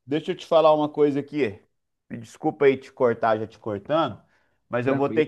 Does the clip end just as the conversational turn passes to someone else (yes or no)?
no